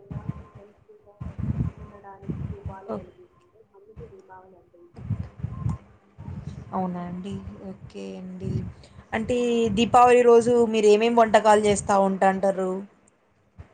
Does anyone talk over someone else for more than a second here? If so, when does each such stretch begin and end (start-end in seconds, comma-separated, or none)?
none